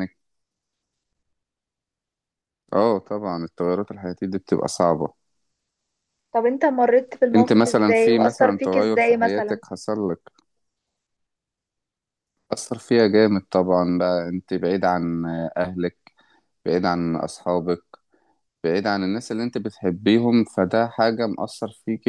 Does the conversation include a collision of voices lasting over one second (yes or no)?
yes